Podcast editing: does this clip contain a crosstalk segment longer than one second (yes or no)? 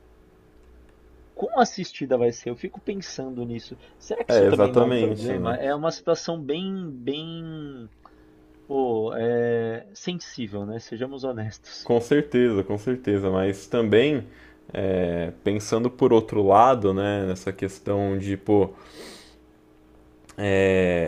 yes